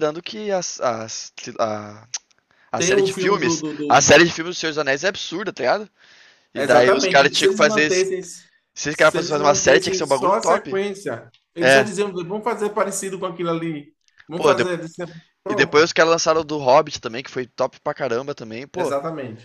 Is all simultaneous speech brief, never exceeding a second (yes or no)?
no